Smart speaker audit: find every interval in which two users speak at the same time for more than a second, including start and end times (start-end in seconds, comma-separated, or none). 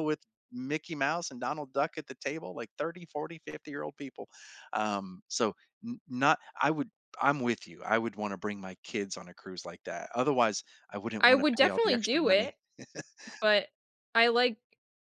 11.2-12.6